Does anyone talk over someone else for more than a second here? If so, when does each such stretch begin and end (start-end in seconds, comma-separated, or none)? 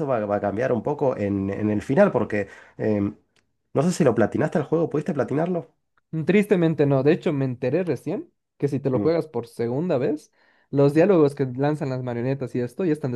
none